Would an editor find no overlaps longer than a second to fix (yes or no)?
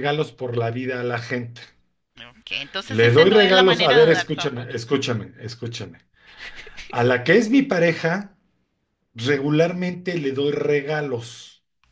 no